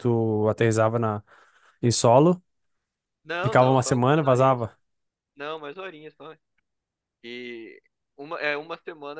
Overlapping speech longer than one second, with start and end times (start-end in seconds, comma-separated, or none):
3.4-4.6